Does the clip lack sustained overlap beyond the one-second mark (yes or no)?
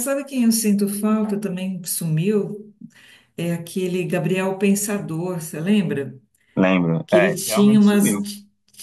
no